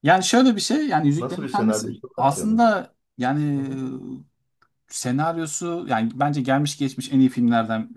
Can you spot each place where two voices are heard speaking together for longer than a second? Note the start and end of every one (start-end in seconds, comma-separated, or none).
1.2-2.6